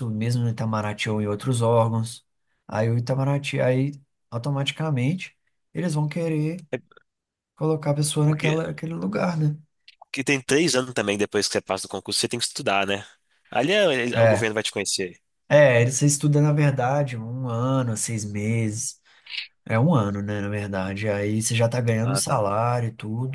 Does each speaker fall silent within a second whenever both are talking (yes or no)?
yes